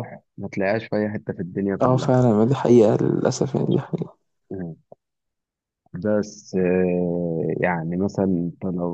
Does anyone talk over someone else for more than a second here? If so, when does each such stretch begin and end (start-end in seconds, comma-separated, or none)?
none